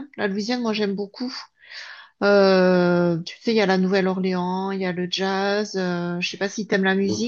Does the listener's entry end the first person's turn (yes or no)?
yes